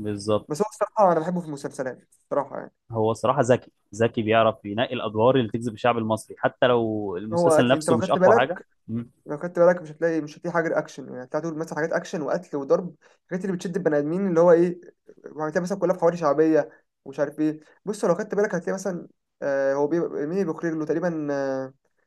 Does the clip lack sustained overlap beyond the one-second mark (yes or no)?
no